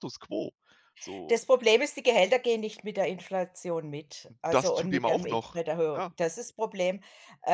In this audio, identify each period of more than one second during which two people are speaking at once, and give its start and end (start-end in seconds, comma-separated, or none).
4.5-6.1